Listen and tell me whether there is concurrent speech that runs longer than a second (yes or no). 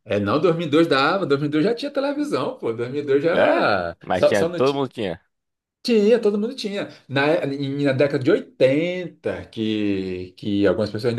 yes